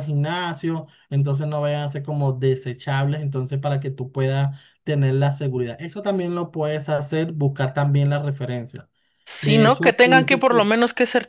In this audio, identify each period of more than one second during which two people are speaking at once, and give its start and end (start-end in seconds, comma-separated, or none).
9.4-10.7